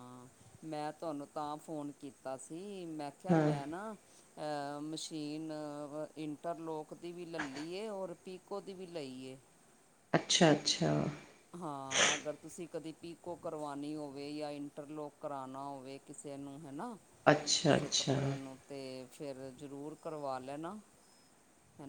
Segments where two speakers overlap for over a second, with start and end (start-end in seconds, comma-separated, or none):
none